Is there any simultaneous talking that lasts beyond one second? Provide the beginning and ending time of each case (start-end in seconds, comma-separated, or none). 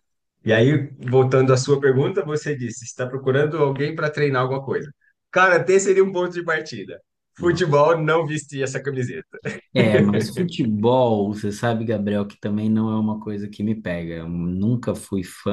none